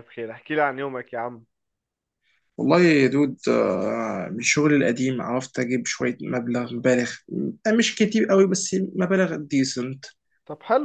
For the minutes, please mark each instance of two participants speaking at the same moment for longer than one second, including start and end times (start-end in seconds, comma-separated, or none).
none